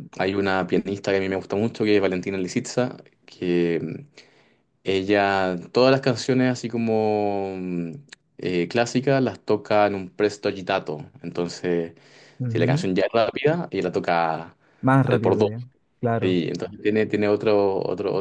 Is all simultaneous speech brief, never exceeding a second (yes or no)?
yes